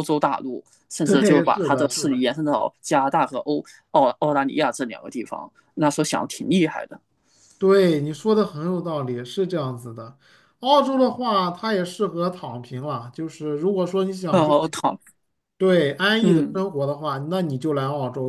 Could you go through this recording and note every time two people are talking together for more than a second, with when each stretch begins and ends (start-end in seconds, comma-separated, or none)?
1.0-2.2